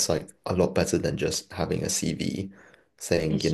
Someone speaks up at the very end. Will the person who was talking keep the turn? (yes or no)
yes